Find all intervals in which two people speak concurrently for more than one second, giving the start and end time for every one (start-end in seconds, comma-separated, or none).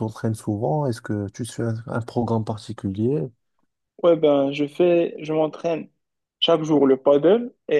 none